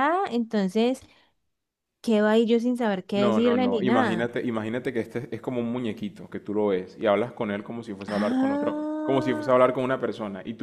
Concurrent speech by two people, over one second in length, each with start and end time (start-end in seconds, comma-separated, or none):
3.1-4.4, 8.1-9.5